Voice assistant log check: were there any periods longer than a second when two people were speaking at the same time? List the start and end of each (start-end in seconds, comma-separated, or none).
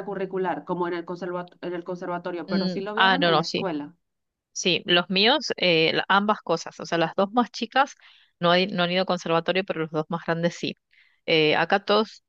2.5-3.7